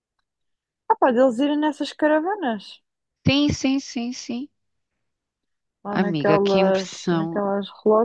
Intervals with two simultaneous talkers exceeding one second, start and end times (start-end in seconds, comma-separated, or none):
5.9-7.4